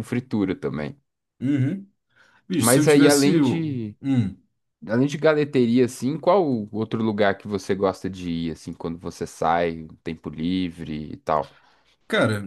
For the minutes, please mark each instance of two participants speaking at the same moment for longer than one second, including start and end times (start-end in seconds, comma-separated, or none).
2.6-4.0